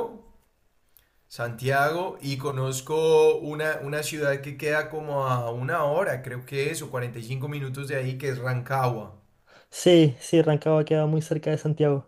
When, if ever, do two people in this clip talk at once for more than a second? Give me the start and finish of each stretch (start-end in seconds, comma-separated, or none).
none